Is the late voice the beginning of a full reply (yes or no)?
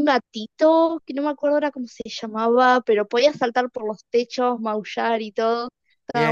yes